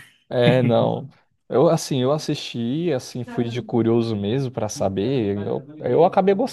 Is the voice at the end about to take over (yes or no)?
no